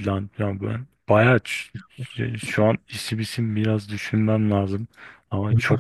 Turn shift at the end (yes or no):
yes